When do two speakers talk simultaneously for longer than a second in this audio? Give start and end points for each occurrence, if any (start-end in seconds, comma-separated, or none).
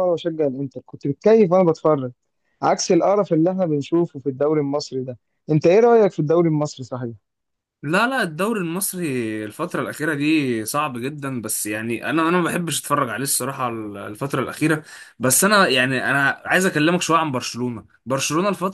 none